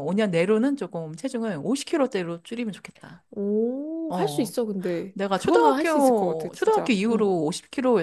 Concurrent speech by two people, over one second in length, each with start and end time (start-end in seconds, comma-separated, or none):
5.1-7.3